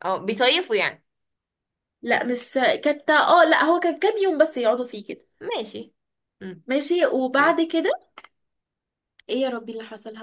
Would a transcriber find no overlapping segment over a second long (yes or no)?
yes